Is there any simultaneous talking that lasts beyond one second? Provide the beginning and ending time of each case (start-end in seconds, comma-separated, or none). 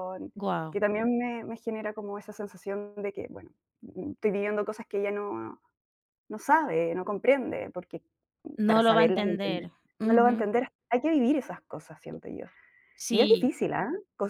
8.7-10.5